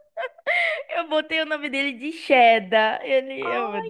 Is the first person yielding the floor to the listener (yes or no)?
yes